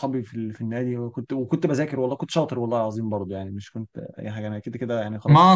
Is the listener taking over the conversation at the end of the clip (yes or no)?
yes